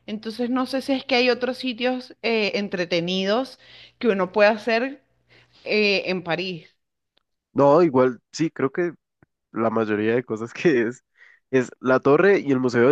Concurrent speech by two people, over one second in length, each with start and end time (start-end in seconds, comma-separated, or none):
none